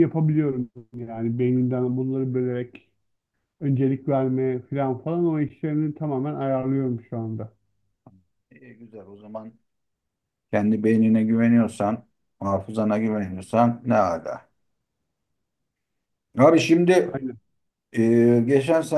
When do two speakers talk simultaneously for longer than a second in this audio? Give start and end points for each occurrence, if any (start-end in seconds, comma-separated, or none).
none